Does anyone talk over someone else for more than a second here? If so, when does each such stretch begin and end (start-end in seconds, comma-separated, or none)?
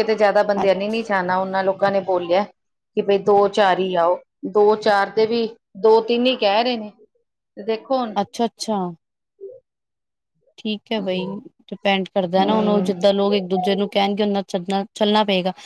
none